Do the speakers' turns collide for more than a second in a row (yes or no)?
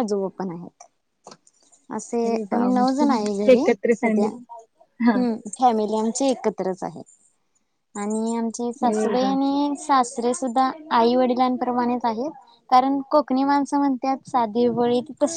yes